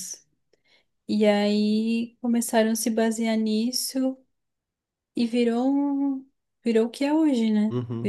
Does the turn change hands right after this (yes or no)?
yes